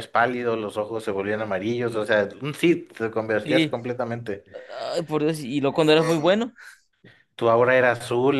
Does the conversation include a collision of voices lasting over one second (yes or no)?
no